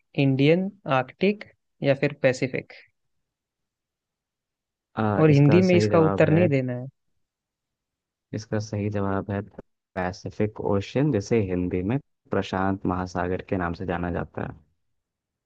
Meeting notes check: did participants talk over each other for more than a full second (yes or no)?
yes